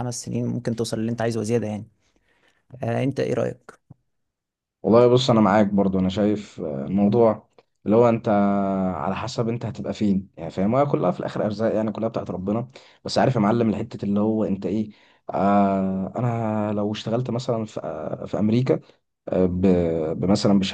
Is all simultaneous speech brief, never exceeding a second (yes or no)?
yes